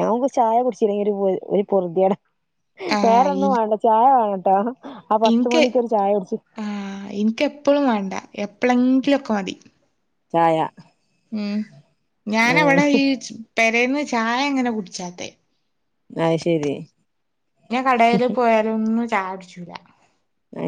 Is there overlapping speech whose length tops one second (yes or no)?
no